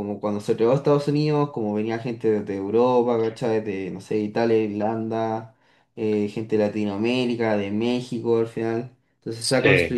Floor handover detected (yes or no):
no